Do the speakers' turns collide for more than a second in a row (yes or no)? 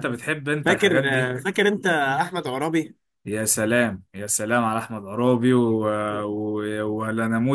no